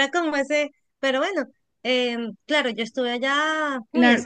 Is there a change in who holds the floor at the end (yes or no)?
yes